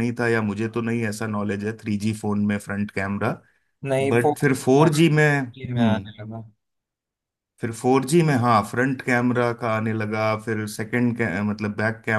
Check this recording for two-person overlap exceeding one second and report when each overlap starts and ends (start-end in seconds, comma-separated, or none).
4.1-6.1